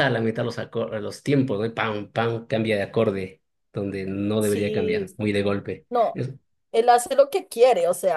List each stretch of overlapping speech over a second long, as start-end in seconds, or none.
4.4-6.2